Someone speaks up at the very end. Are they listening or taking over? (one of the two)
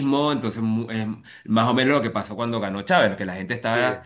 listening